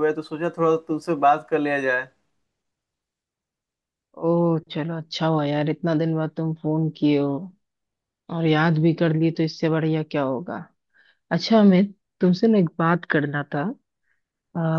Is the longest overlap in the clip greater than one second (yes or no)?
no